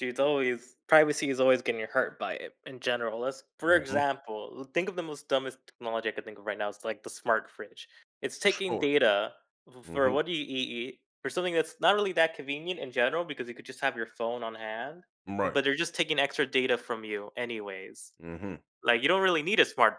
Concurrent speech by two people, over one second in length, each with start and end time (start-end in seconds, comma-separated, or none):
none